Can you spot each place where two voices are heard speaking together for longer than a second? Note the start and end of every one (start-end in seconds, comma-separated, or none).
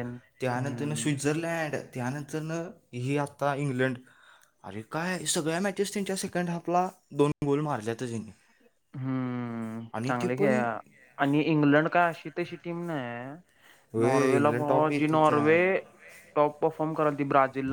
14.0-15.4